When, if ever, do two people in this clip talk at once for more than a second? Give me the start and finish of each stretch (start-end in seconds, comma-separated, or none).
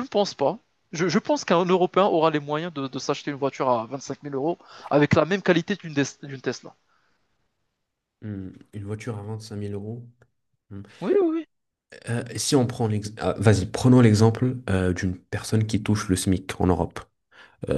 none